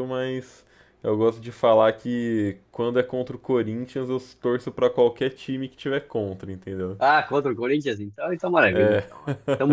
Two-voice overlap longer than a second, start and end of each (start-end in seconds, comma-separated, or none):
none